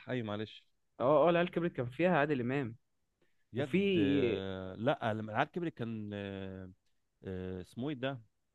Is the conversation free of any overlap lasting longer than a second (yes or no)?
yes